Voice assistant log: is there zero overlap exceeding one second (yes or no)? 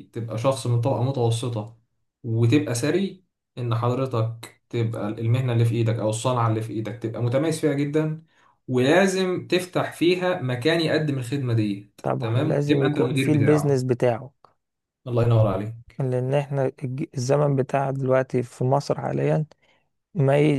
no